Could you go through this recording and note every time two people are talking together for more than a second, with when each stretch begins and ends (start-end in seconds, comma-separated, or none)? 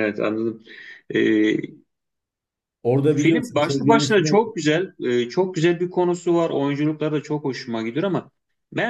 3.1-4.4